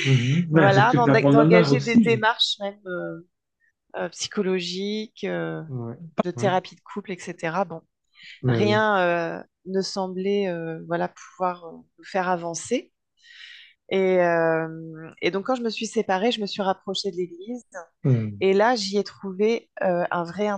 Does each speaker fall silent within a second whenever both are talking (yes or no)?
no